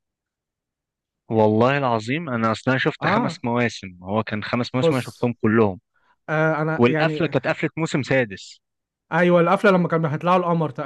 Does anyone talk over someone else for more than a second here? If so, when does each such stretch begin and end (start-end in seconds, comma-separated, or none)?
none